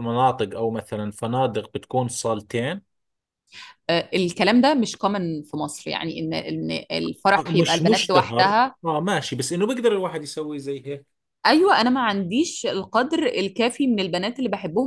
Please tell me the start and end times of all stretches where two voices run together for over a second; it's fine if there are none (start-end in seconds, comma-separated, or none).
7.4-8.8